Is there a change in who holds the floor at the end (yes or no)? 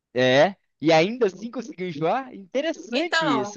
yes